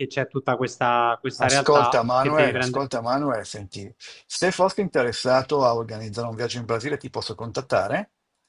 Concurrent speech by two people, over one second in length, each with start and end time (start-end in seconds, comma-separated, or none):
1.4-2.9